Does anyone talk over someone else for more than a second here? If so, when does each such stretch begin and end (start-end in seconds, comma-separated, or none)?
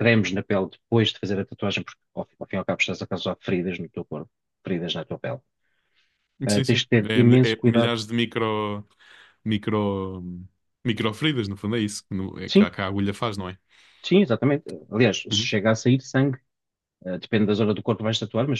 6.5-7.9